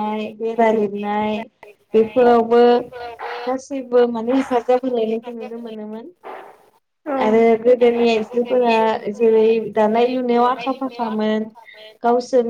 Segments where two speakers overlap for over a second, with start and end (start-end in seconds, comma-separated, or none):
none